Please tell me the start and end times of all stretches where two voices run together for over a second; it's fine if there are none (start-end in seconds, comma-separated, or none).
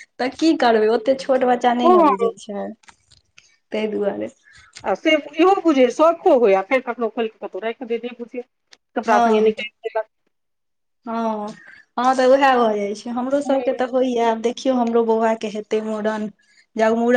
none